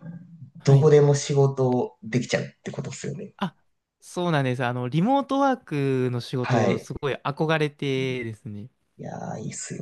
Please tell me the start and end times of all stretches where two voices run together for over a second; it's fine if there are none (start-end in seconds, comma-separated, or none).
none